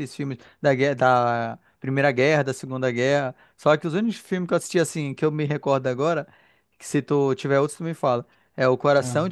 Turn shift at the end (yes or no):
no